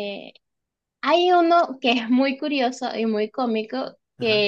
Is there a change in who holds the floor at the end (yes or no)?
no